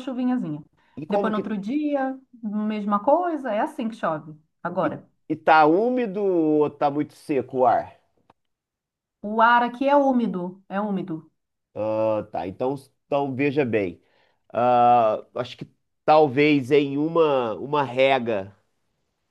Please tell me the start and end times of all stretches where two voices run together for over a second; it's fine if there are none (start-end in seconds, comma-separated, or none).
none